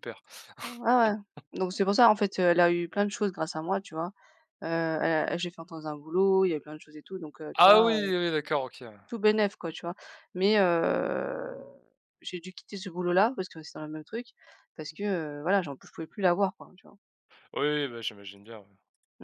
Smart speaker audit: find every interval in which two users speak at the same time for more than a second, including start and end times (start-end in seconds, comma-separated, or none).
none